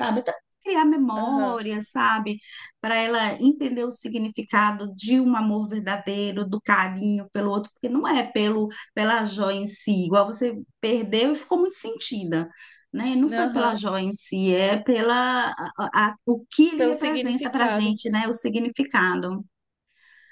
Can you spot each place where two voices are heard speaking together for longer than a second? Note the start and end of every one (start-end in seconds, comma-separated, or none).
16.8-18.0